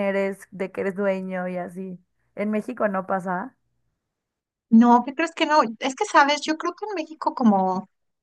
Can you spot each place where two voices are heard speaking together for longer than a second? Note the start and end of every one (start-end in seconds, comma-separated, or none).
none